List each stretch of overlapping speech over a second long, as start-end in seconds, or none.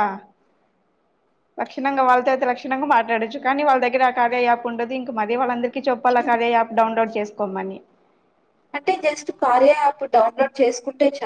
none